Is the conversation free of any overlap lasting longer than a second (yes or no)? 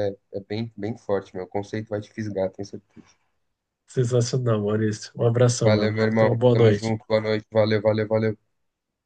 no